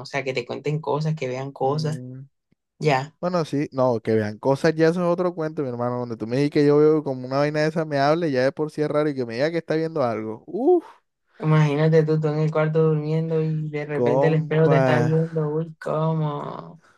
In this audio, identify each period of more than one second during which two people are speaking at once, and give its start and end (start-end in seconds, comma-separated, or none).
13.9-15.1